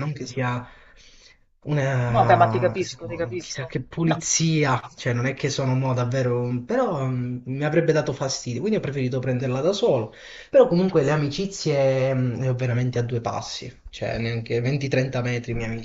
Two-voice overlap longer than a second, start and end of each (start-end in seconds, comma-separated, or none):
2.1-4.2